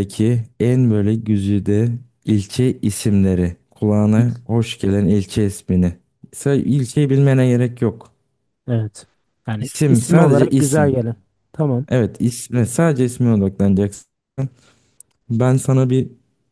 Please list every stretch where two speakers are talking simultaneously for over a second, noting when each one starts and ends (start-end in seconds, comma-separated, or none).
9.6-11.0